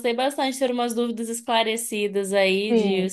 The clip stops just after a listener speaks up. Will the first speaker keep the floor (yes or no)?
no